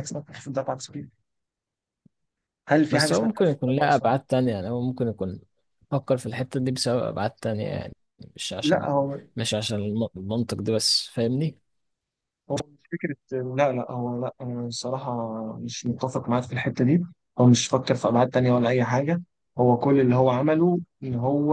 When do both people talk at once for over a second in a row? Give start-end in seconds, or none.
2.9-4.2